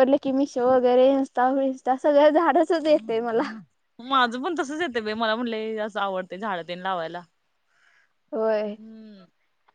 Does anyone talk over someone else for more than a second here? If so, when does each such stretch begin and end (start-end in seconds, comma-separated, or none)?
none